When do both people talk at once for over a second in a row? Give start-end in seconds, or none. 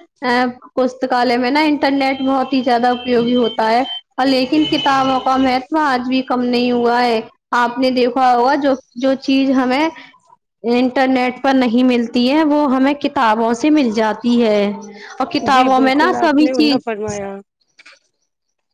15.5-17.2